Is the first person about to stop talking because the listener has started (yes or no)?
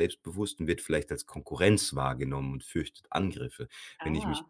no